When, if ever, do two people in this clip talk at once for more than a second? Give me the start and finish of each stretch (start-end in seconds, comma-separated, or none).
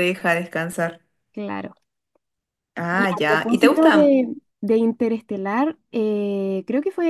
2.9-4.1